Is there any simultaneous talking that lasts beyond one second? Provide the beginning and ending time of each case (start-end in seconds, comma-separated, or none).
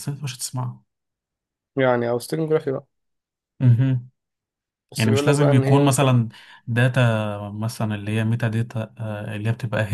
5.0-6.2